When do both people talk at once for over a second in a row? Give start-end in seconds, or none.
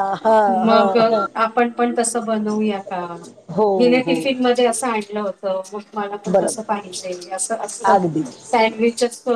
none